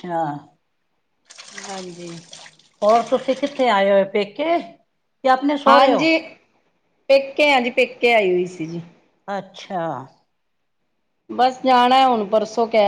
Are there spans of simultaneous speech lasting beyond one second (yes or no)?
no